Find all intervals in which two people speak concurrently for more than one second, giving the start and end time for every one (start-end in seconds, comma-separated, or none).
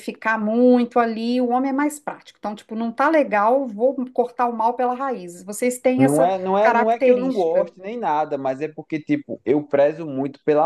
6.0-7.7